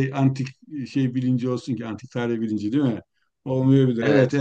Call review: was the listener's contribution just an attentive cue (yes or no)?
yes